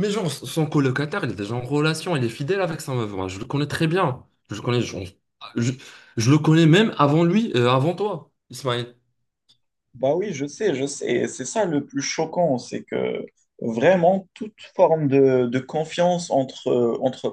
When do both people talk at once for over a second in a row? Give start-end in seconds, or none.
none